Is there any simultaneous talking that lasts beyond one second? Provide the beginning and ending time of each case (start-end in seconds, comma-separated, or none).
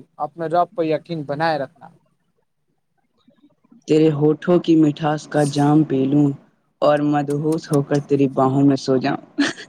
none